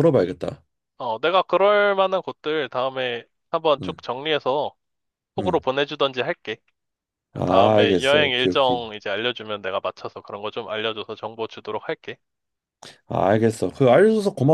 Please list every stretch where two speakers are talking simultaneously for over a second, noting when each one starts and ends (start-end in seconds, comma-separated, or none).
7.3-8.8